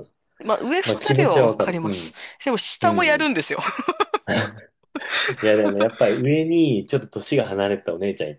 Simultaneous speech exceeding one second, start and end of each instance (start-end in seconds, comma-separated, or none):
0.8-2.1